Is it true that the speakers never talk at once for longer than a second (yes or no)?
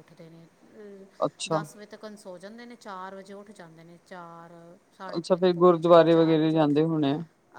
no